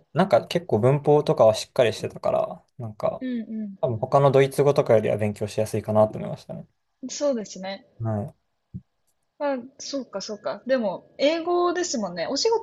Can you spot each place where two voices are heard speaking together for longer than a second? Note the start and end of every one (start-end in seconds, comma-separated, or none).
none